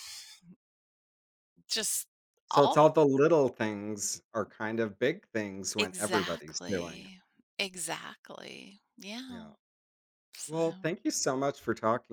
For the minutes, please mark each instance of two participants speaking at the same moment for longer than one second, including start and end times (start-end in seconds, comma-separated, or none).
5.8-7.1